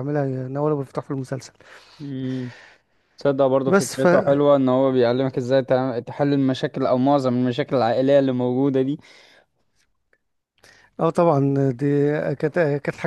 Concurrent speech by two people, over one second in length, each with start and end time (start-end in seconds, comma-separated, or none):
none